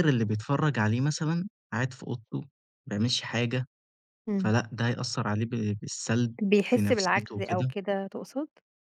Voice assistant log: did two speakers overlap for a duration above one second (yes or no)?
yes